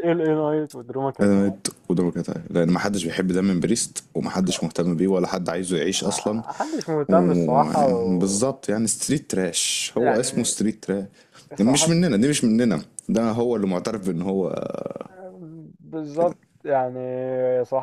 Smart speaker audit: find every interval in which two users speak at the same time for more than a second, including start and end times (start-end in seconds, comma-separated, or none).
7.1-8.4